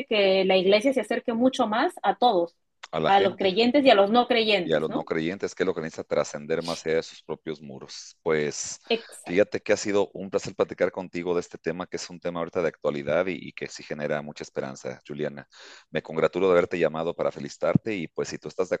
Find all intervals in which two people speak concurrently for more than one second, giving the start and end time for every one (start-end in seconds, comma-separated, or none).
none